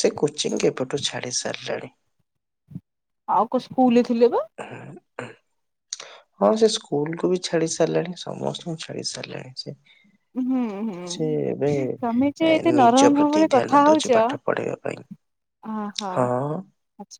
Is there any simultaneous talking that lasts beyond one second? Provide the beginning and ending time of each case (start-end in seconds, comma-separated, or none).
12.5-14.3